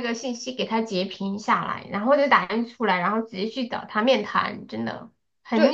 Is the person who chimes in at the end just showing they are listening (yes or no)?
no